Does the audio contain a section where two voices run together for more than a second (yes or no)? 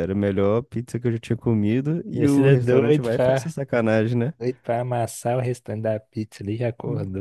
yes